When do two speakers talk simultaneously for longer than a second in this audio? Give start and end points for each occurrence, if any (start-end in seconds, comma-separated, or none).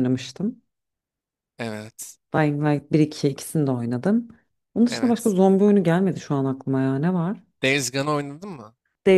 none